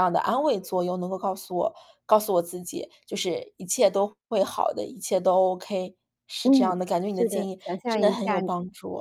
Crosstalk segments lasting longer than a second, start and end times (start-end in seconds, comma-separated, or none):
6.5-8.5